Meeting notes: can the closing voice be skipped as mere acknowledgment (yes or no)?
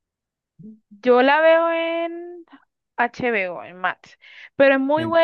yes